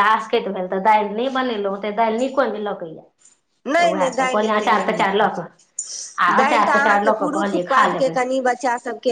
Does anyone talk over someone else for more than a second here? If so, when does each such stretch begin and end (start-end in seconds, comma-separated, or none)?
6.2-8.2